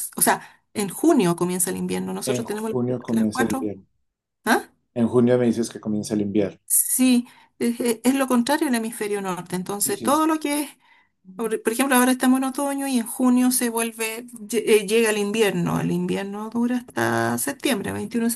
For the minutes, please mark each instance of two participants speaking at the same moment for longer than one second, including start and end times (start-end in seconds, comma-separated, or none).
2.2-3.7